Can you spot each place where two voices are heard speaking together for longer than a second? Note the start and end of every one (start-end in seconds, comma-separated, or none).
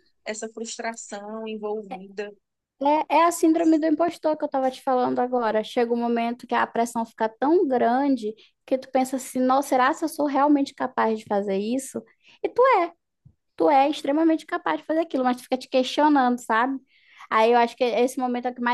none